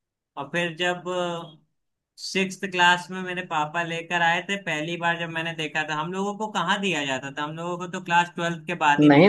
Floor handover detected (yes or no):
yes